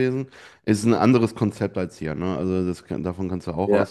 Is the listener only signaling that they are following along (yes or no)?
yes